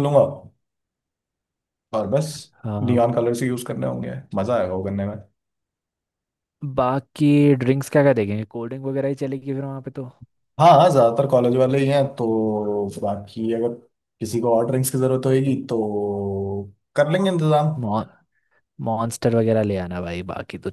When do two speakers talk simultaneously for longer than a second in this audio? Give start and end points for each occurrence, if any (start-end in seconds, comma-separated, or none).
none